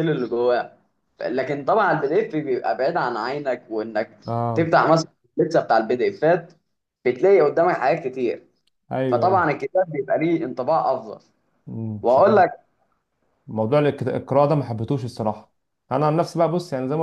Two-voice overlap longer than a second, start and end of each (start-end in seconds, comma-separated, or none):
none